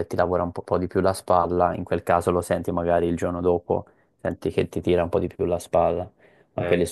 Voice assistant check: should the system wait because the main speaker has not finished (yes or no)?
yes